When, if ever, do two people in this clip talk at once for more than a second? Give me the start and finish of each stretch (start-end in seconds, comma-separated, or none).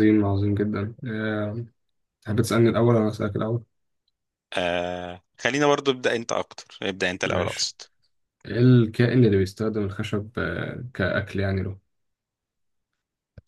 none